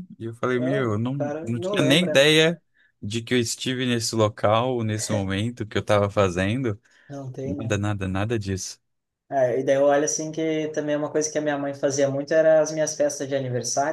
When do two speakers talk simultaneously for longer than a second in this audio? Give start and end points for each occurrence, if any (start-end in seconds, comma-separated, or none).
0.6-2.3